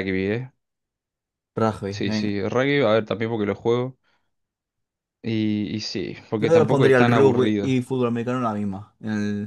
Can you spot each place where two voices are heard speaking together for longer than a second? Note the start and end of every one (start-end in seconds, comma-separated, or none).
6.4-7.7